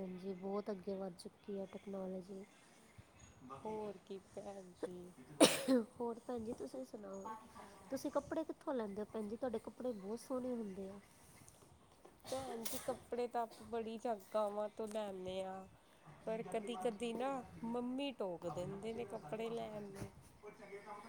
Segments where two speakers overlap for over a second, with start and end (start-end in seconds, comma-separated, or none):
none